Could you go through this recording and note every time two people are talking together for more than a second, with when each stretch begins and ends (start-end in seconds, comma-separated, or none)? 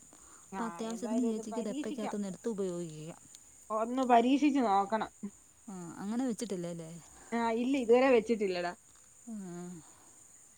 0.6-2.1